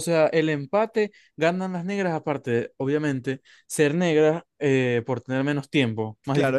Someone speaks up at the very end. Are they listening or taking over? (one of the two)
taking over